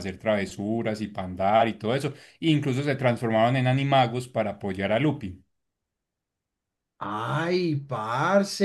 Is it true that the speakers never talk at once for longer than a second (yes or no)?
yes